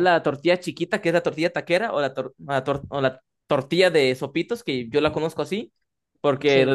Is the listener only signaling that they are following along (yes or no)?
yes